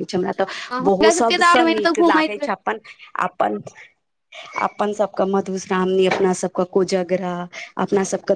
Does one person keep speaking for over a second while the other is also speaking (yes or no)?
yes